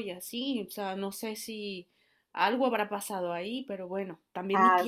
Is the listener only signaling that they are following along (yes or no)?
no